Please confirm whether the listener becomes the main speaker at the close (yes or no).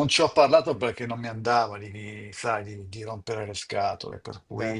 no